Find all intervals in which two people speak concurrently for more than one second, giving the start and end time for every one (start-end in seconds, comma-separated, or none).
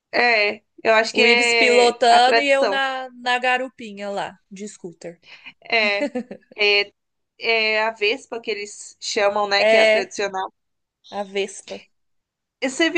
1.1-2.8